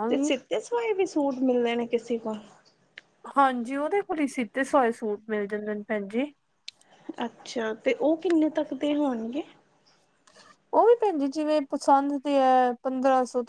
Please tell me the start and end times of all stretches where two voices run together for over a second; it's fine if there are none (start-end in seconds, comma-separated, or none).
none